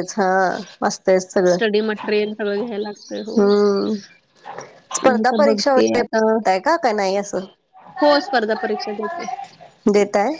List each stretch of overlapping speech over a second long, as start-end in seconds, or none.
5.0-6.4